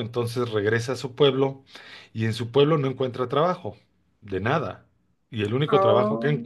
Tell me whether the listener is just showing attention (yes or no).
yes